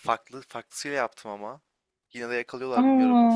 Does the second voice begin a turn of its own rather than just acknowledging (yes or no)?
no